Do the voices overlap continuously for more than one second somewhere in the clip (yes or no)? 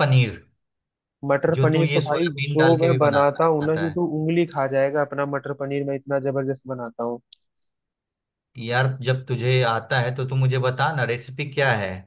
yes